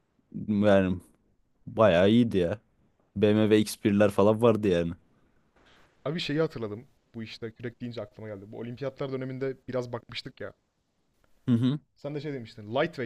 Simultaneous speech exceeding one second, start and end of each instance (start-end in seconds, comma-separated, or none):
none